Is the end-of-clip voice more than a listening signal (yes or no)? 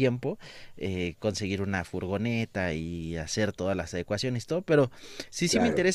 no